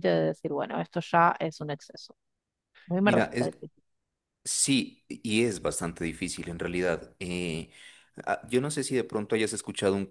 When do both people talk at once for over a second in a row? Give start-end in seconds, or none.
none